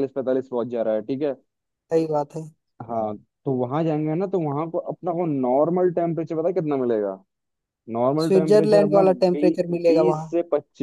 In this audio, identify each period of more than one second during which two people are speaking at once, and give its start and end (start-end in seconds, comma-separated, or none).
8.2-10.3